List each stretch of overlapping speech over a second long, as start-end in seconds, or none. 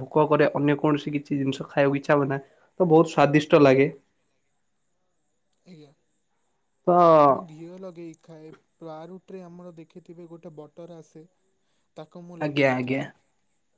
none